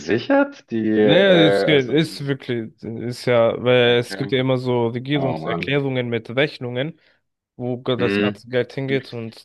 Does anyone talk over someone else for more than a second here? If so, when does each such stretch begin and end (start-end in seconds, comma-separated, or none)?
1.0-2.3